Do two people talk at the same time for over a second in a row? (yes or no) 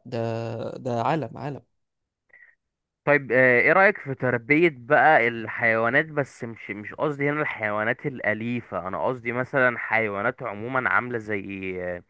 no